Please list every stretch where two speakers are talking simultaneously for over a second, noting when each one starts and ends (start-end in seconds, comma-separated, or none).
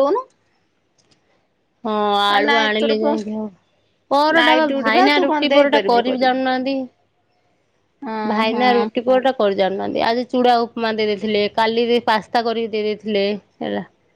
4.4-6.4